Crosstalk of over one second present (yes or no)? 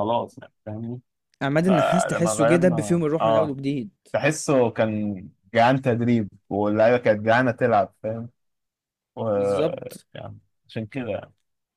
yes